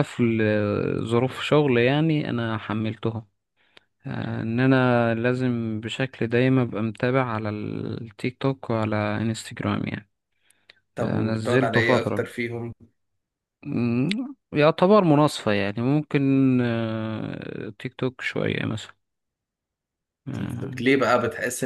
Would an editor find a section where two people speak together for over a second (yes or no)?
yes